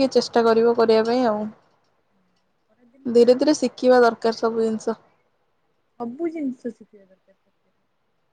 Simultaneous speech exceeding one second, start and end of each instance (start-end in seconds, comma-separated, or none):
none